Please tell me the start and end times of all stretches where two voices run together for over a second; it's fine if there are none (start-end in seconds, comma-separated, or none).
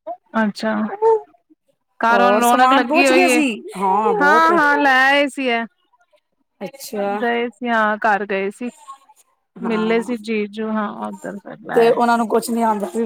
2.1-3.4